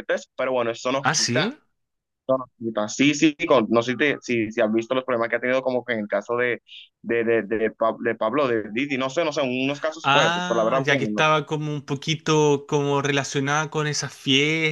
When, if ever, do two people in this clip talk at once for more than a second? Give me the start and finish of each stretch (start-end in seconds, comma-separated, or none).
10.1-11.3